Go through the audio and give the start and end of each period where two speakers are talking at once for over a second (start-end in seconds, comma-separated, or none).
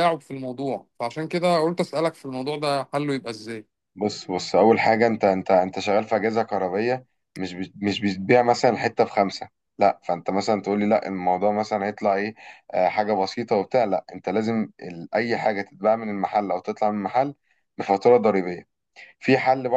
none